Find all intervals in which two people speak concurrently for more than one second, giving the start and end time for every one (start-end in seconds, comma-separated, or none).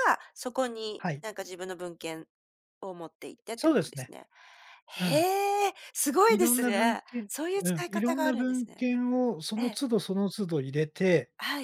6.3-8.8